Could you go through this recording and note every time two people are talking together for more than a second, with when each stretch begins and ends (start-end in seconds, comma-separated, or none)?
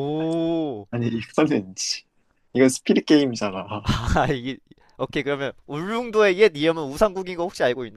none